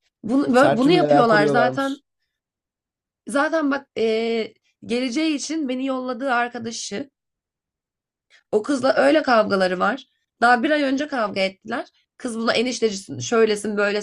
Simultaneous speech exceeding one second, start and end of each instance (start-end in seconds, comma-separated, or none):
0.5-2.0